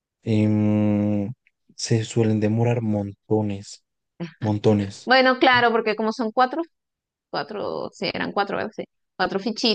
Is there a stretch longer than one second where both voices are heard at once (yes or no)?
no